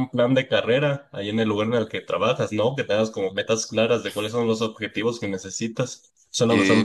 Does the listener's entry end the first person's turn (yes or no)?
yes